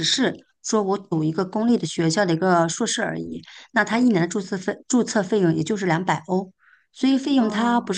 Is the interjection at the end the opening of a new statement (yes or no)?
no